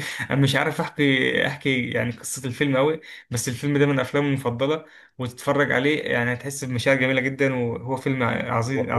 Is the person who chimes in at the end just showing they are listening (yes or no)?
no